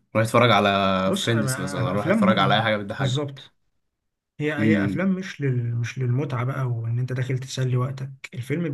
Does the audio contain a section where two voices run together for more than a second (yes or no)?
yes